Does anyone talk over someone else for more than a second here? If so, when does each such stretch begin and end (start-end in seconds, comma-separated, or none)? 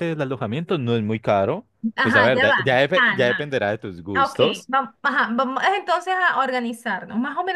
2.0-3.4